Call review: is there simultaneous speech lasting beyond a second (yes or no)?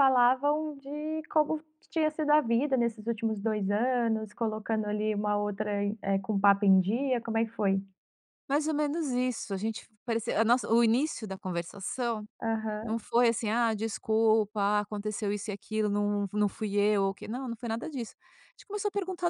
no